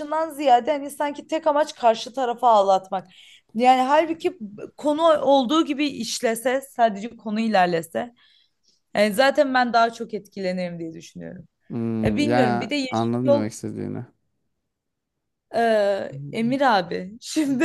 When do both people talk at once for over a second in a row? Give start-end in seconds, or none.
12.0-13.4